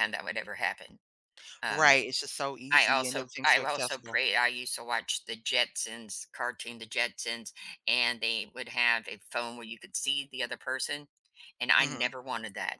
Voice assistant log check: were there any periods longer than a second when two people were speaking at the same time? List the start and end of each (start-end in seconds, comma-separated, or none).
2.7-4.2